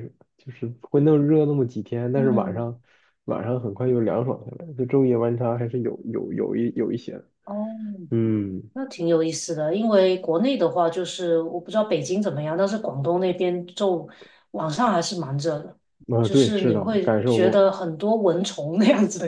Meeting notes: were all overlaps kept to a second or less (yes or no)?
no